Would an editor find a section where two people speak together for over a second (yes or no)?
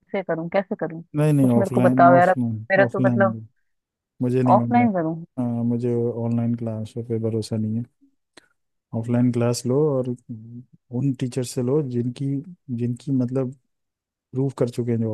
yes